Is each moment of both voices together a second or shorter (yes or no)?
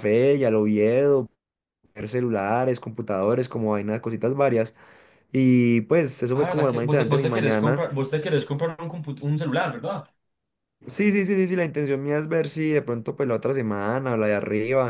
no